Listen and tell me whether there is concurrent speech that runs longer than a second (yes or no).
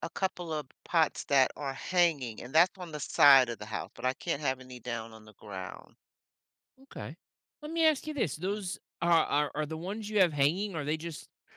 no